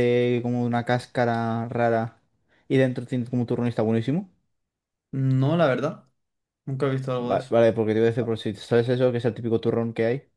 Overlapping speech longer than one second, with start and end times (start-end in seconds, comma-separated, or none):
none